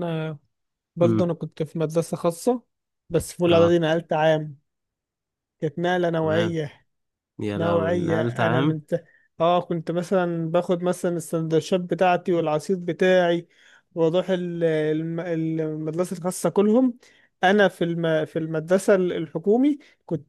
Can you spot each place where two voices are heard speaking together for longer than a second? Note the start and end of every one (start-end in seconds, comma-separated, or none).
7.6-8.8